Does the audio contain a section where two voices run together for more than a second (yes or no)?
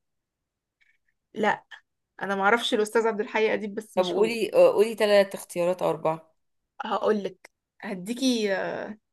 no